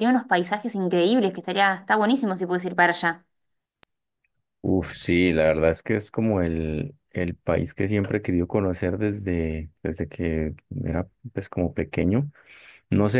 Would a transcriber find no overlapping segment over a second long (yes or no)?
yes